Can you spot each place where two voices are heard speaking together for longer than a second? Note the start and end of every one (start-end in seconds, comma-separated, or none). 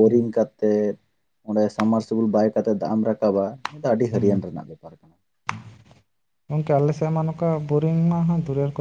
none